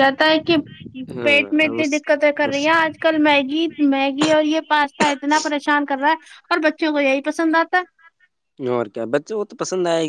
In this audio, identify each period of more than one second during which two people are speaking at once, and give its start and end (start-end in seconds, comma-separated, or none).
1.3-2.7